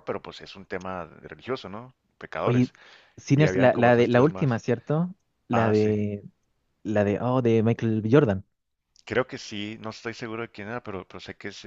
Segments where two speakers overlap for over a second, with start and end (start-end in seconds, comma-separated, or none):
3.4-4.6